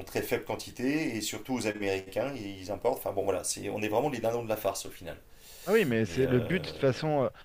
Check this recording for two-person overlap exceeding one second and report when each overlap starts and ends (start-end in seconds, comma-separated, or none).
none